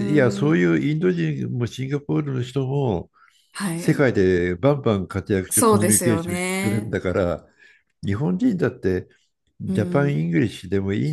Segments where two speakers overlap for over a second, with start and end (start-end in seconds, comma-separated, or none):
5.5-7.0